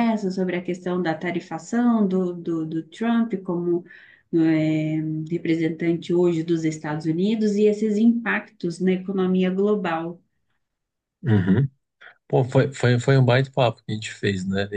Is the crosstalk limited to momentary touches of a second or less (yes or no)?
yes